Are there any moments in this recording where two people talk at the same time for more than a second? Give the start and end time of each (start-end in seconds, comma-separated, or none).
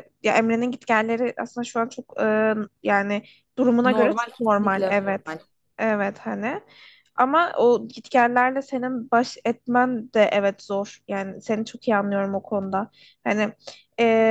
3.8-5.3